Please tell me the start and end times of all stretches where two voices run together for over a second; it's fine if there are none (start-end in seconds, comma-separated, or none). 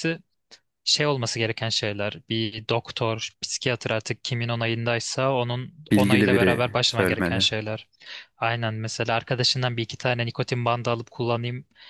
5.9-7.5